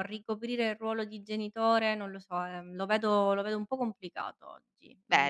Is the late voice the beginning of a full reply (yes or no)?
yes